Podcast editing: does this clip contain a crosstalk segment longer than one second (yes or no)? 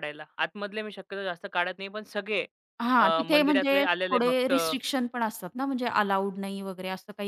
yes